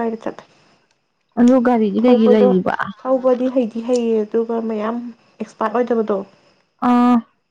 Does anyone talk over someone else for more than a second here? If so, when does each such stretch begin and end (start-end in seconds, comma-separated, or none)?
none